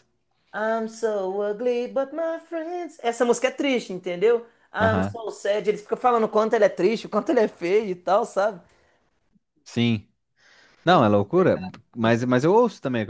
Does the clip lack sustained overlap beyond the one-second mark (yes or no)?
yes